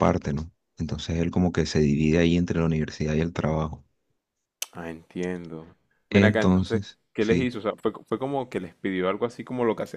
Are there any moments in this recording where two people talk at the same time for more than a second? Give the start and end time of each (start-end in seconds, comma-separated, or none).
6.1-7.5